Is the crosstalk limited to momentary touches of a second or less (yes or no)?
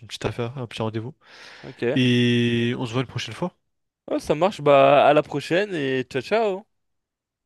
yes